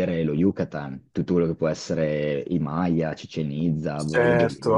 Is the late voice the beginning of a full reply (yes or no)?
yes